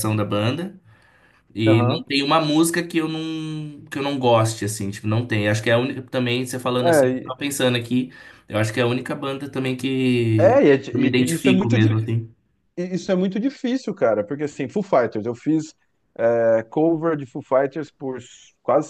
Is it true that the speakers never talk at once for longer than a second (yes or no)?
no